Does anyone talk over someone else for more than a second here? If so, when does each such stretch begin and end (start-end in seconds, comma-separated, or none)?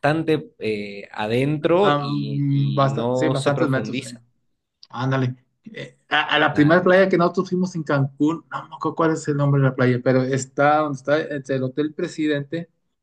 1.8-4.2